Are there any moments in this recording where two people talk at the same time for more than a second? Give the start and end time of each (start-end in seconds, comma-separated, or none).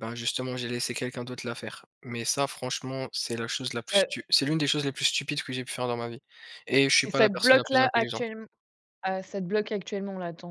7.0-8.3